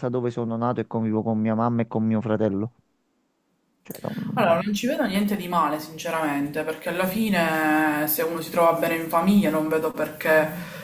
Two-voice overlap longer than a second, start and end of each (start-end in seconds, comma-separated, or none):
none